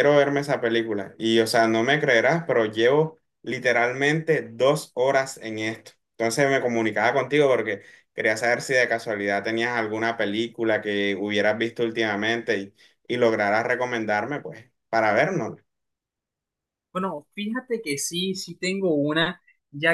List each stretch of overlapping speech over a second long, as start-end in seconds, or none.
none